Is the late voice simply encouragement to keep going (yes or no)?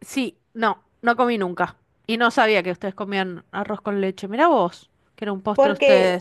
no